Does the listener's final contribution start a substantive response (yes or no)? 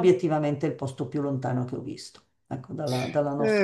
yes